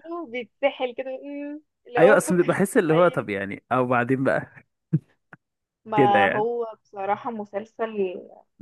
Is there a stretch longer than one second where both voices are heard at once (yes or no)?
yes